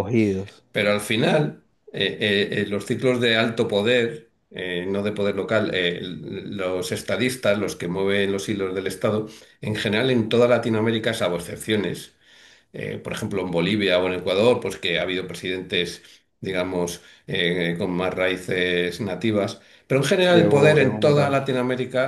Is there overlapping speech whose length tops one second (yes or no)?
yes